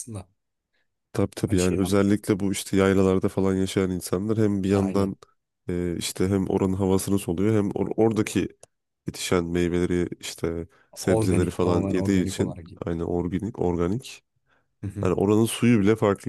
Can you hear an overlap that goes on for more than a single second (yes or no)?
yes